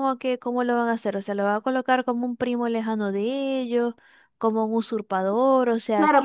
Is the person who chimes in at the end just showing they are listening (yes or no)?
no